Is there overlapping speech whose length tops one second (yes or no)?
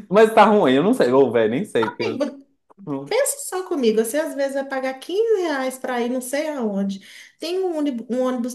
no